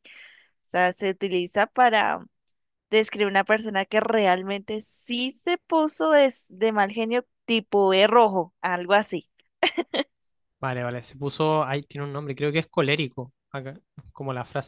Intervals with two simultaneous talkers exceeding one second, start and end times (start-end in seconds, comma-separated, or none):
none